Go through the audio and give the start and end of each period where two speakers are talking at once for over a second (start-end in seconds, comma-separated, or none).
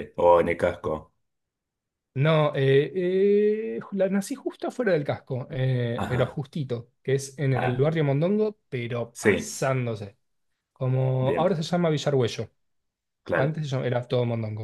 none